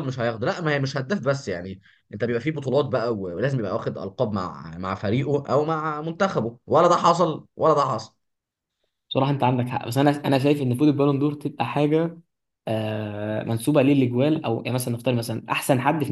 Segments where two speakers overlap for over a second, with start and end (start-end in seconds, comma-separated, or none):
none